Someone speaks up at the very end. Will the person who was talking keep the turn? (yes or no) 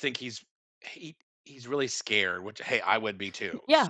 no